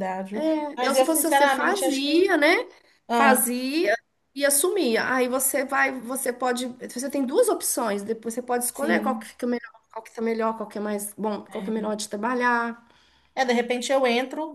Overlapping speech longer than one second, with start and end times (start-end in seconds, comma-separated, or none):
0.8-2.3